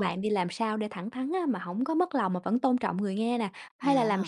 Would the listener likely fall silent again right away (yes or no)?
yes